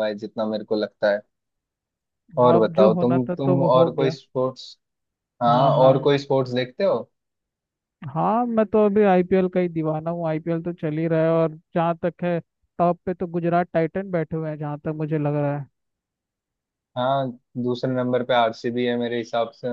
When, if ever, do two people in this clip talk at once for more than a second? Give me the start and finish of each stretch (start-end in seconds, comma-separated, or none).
2.6-4.2